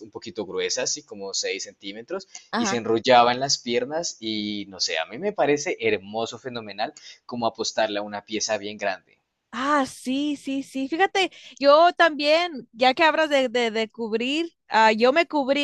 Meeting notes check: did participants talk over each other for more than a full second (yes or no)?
no